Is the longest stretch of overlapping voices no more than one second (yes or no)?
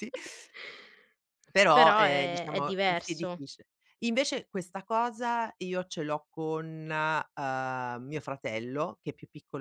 no